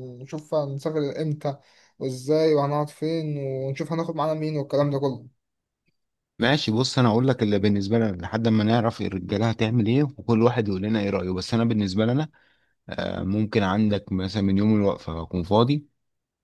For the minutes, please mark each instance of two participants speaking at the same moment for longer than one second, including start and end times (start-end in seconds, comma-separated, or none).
none